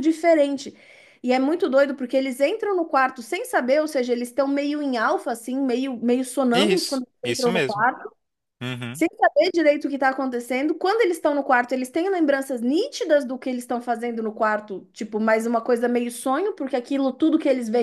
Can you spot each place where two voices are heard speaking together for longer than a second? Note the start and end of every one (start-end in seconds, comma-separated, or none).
6.5-7.9